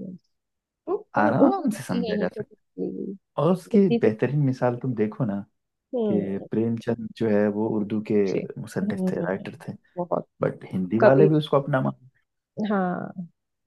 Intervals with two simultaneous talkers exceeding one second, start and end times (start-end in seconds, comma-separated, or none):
1.2-2.4